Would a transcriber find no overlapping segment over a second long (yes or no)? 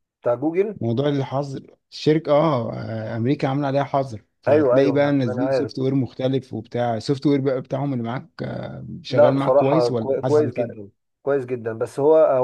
no